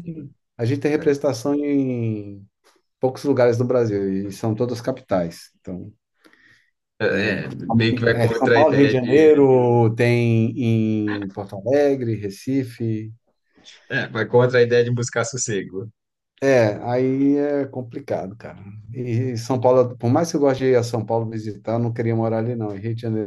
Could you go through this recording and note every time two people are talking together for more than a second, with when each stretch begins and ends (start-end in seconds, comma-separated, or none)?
8.1-9.3